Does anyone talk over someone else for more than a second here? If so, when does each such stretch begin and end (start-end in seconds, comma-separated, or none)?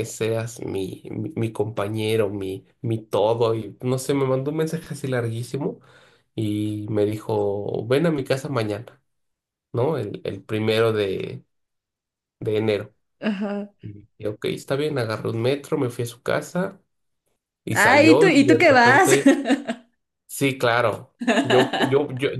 17.7-19.1